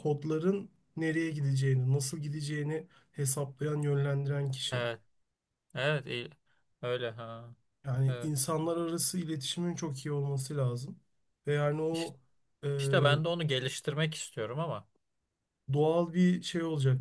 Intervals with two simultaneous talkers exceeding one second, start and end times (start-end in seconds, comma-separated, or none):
none